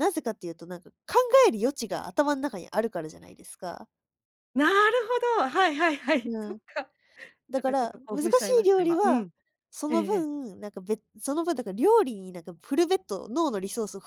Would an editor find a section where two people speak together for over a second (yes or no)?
yes